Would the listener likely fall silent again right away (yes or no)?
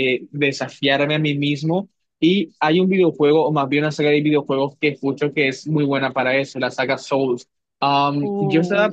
yes